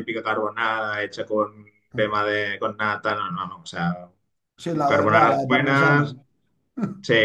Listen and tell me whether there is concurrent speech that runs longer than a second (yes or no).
yes